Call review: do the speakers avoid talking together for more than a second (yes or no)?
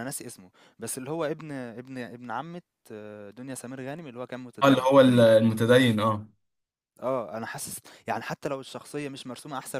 yes